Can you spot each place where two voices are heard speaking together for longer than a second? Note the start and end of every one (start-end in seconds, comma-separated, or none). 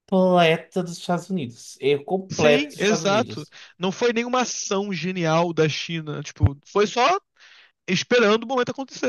2.3-3.5